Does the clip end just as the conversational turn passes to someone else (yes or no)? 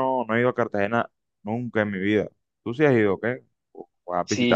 yes